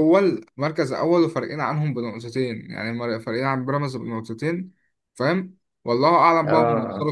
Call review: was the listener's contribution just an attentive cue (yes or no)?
yes